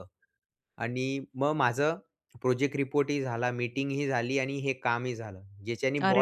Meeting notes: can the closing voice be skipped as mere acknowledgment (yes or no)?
no